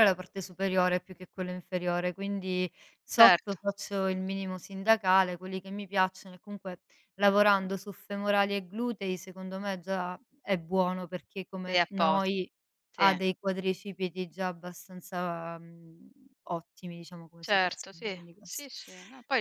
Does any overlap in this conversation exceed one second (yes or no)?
yes